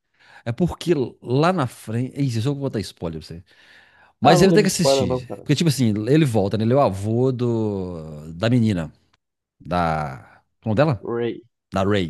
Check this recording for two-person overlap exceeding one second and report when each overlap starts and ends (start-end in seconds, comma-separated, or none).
4.2-5.5